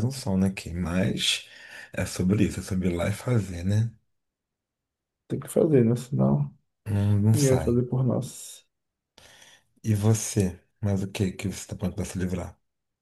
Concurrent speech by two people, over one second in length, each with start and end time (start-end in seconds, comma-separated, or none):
none